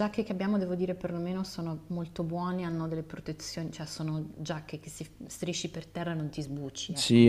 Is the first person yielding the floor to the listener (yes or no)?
yes